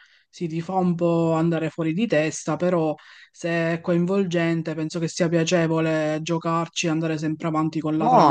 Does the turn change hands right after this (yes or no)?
yes